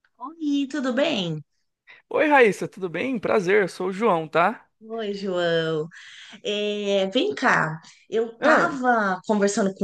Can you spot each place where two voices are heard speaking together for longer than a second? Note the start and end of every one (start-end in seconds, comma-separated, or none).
none